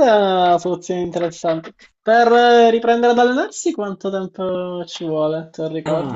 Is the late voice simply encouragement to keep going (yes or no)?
no